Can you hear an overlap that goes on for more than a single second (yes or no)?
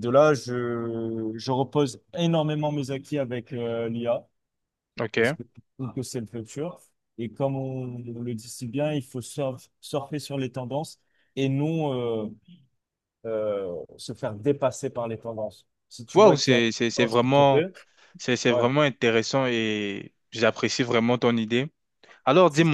yes